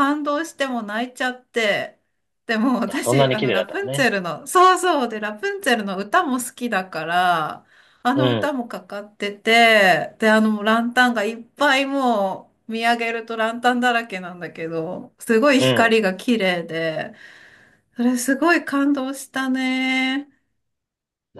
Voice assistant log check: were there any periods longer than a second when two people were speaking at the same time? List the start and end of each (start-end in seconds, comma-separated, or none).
2.9-4.1